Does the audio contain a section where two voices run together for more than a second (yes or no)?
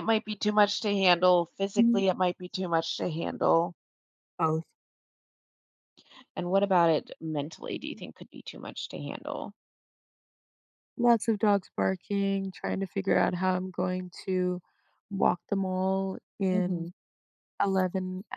no